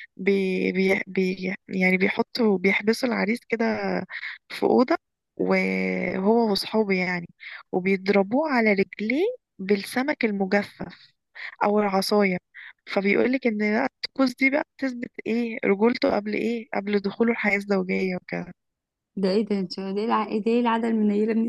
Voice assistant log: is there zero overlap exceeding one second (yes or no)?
yes